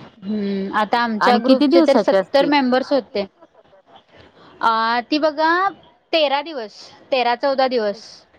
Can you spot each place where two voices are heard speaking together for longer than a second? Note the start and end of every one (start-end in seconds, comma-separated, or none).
1.3-2.9